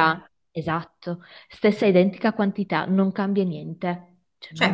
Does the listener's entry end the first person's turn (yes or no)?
yes